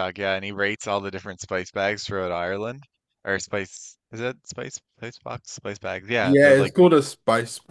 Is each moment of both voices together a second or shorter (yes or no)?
yes